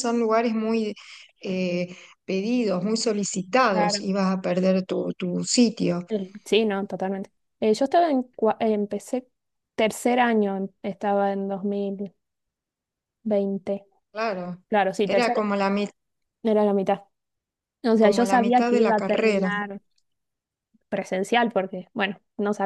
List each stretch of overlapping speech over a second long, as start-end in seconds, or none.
18.0-19.5